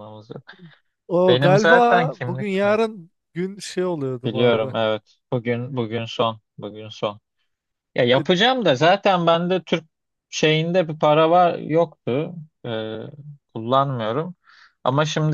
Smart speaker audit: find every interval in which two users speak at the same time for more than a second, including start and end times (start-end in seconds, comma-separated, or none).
1.3-2.8